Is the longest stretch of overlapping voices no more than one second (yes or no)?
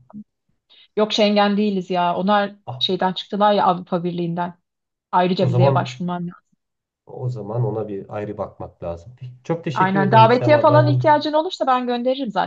no